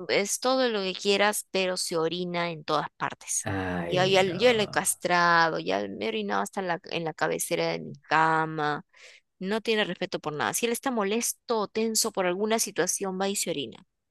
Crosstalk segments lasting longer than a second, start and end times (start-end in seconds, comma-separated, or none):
3.4-4.9